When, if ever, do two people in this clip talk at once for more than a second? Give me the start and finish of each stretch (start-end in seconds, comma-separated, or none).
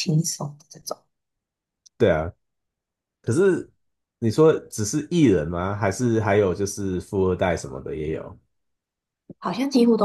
none